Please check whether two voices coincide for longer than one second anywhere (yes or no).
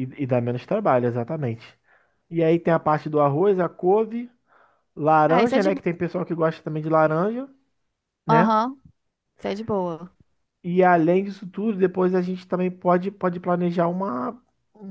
no